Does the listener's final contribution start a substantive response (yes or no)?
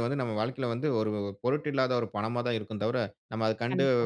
no